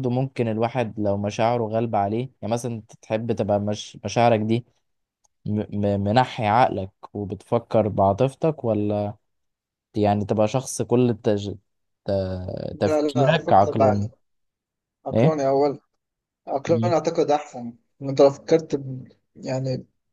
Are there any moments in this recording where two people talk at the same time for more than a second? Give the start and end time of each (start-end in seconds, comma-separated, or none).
12.8-14.1